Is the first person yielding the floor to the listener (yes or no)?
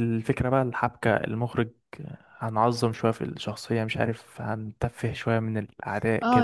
yes